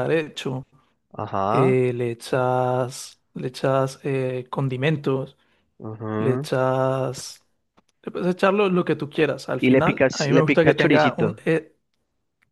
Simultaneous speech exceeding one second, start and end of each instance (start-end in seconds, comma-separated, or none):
9.6-11.4